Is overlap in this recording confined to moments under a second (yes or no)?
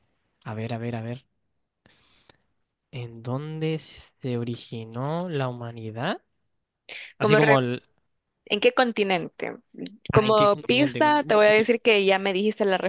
no